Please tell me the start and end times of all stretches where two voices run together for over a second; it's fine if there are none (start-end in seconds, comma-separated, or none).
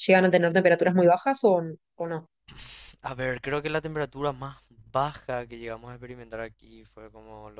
none